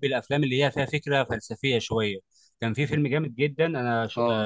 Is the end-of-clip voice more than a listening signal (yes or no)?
no